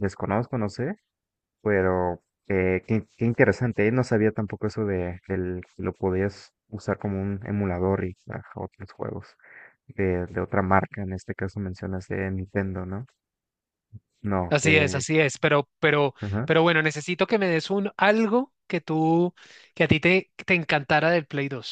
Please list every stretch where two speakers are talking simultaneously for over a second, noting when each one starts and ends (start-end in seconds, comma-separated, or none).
none